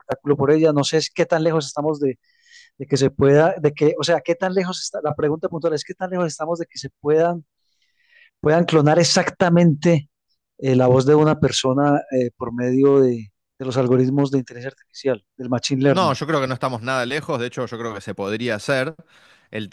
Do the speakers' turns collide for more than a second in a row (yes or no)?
no